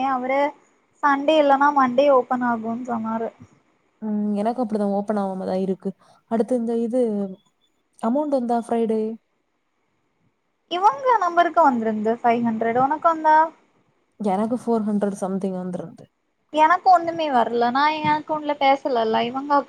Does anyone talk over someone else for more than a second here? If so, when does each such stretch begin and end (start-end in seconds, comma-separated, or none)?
none